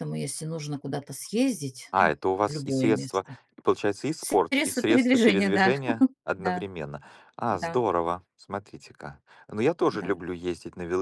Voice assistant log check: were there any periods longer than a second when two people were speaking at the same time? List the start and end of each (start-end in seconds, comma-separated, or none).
1.9-3.4, 4.2-5.7